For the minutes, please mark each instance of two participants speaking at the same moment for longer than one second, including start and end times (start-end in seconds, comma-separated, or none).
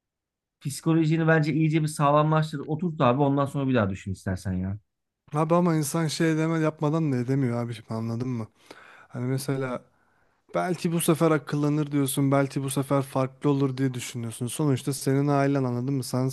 none